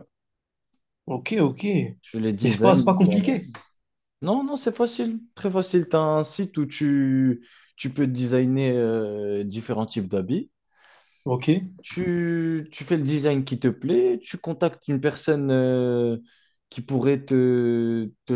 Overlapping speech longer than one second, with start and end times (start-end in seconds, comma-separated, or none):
2.0-3.4